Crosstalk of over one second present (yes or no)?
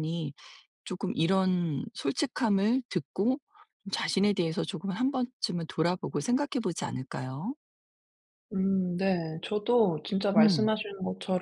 no